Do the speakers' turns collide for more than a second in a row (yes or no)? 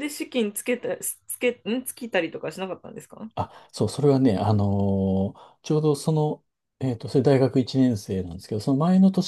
no